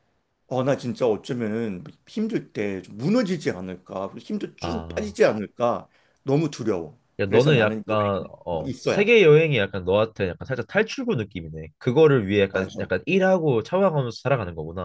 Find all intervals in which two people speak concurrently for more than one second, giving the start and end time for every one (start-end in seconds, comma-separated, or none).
7.2-9.1